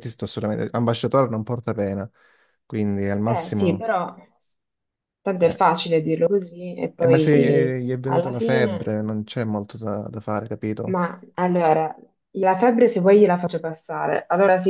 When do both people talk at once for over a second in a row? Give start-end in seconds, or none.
7.0-9.0